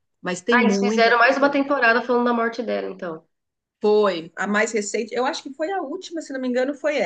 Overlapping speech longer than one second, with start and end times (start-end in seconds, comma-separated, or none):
0.5-1.8